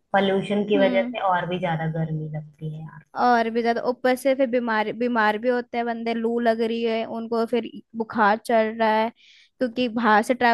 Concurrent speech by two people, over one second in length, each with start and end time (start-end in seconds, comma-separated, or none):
none